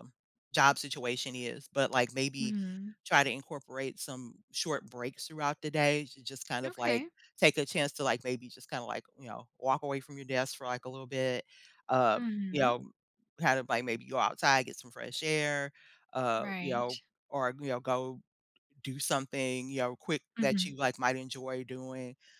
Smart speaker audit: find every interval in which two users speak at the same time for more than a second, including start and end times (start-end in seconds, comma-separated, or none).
none